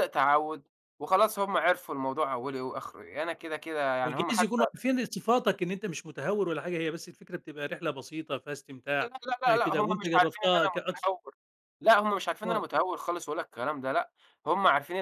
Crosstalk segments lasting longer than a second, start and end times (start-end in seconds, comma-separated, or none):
9.0-11.1